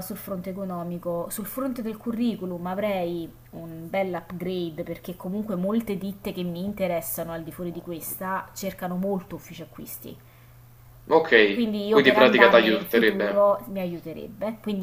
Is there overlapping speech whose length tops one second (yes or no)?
yes